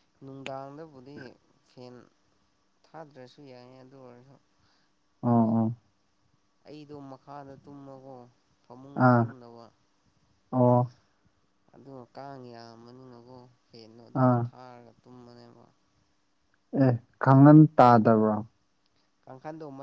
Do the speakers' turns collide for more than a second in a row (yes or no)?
no